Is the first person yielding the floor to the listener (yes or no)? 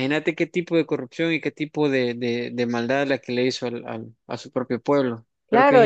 yes